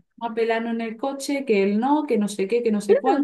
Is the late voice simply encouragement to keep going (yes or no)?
yes